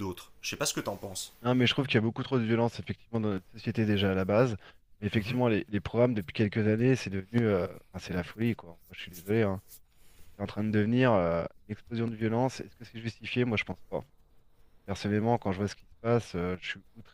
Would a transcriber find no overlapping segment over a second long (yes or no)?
yes